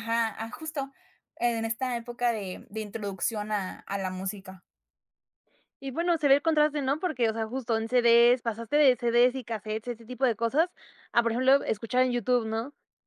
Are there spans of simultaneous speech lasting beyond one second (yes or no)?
no